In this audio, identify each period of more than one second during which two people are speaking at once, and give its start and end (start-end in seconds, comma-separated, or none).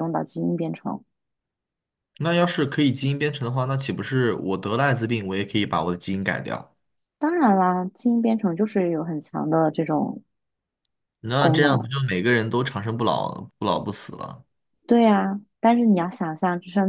none